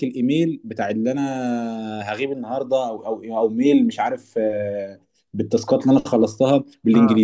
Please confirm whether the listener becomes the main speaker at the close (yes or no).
no